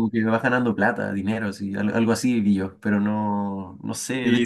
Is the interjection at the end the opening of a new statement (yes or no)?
yes